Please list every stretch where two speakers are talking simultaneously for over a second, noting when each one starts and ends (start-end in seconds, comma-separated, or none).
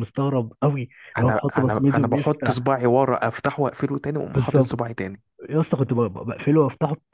1.2-2.6